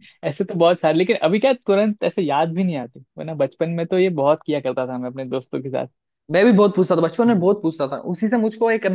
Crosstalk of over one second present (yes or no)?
no